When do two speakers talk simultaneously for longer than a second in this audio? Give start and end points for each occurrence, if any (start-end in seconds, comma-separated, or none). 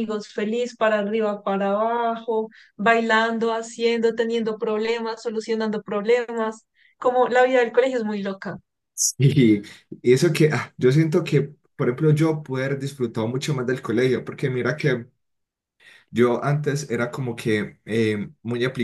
none